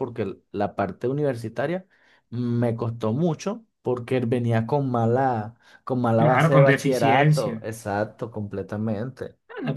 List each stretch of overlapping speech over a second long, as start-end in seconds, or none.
6.1-7.6